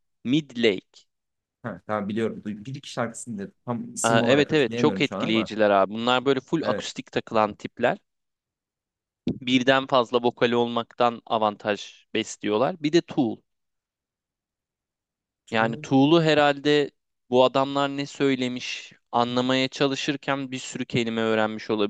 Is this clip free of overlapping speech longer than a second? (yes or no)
no